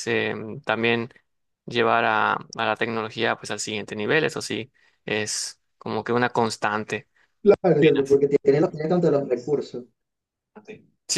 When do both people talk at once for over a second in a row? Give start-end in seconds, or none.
none